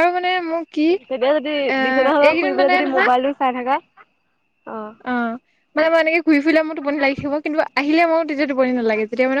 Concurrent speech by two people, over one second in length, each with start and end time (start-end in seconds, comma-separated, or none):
1.1-3.1